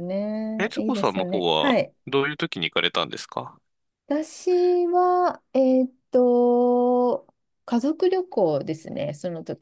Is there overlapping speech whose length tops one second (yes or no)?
yes